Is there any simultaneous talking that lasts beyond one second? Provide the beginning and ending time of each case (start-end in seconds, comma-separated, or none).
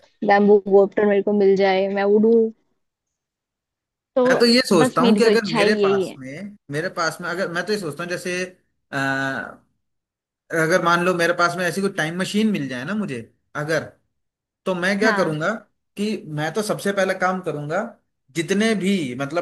4.8-6.2